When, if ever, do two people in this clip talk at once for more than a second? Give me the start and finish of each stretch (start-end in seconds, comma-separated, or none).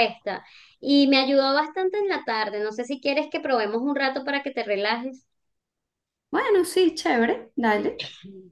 none